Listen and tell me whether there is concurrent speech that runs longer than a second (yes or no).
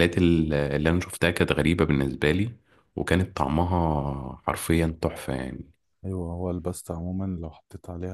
no